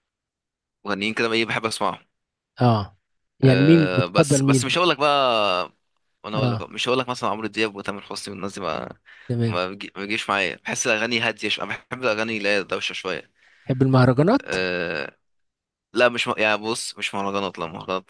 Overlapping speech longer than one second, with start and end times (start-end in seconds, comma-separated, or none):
3.4-4.7